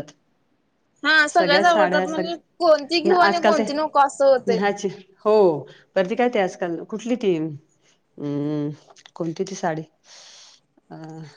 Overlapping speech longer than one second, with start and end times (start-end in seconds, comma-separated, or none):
1.4-3.6